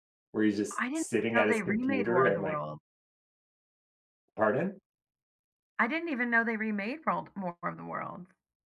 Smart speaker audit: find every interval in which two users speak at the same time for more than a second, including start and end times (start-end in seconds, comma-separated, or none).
0.8-2.6